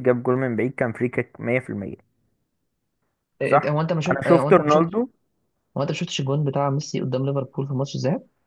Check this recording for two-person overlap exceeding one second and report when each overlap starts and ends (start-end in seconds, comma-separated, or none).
3.5-5.0